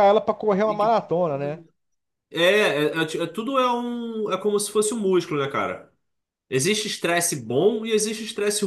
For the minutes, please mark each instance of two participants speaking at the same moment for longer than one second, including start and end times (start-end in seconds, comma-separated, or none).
none